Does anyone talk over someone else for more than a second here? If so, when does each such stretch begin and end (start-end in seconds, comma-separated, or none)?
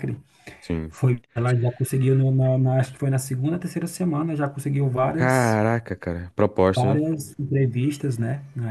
none